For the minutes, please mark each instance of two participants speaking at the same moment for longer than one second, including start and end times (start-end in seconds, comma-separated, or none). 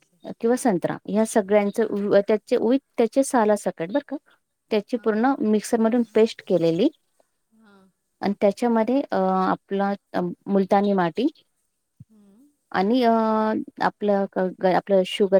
none